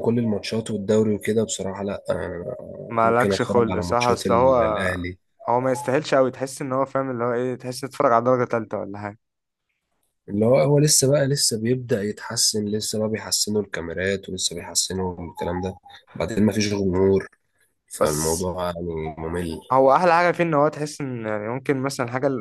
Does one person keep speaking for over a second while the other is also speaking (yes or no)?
yes